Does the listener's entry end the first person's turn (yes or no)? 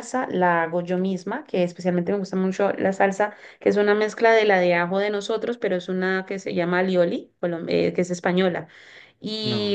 no